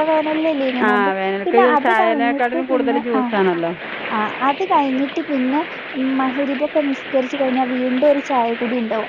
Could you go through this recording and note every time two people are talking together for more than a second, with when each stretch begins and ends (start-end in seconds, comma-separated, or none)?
0.9-3.4